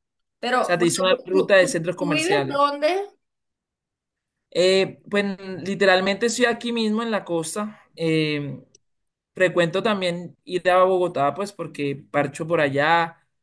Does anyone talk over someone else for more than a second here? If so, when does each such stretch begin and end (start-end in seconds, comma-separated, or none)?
0.6-2.7